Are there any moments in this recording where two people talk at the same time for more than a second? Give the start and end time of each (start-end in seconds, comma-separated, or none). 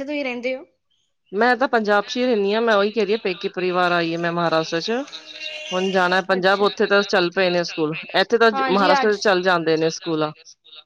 2.0-4.9, 5.7-10.3